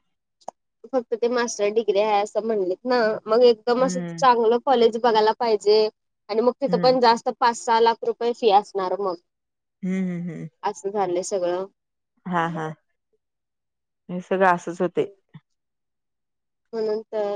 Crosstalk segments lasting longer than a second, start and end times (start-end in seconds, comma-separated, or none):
none